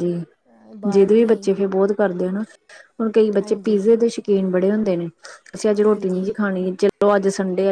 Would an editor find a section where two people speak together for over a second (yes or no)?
no